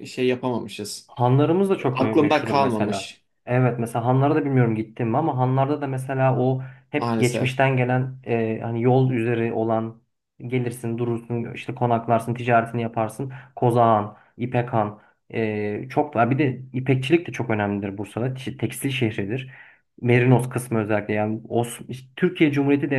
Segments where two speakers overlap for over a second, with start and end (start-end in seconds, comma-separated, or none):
1.9-3.2